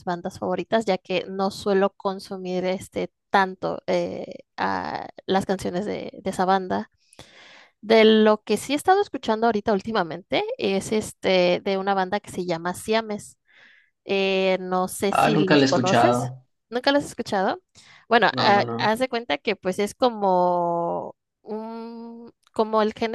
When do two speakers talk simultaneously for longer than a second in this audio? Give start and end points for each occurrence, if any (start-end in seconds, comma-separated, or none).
15.1-16.3